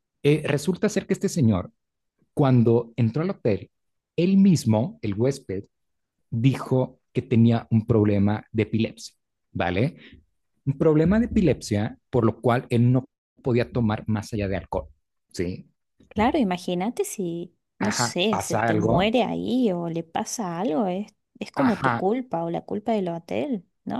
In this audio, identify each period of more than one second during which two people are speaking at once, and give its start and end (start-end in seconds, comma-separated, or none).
17.8-19.1